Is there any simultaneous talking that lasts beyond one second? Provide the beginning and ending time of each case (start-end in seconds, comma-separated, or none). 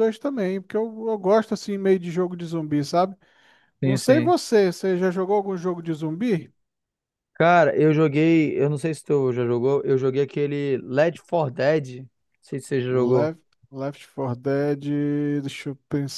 none